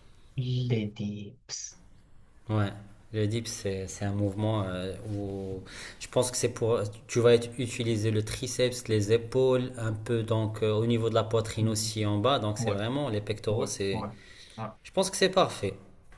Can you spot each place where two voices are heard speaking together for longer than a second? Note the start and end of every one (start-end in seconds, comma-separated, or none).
none